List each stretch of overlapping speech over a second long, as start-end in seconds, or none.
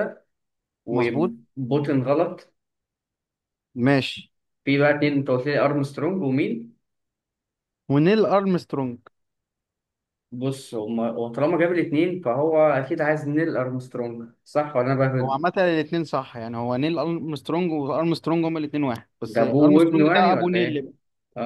19.2-20.9